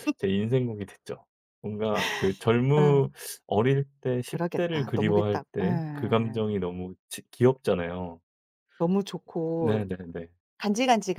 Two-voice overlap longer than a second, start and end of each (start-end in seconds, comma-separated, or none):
4.3-6.4